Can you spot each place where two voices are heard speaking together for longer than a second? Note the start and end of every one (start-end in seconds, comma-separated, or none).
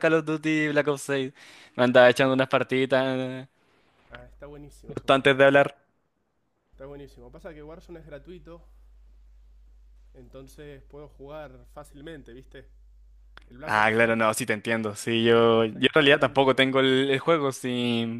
15.2-16.6